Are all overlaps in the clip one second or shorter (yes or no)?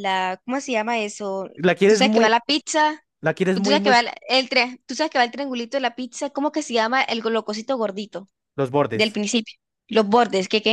yes